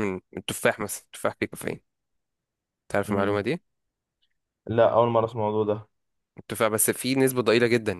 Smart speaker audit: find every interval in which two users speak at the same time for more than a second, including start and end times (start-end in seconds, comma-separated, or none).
none